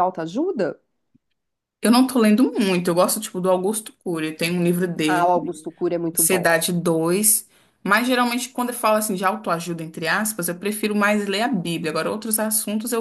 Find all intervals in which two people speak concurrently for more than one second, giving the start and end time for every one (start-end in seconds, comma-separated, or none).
none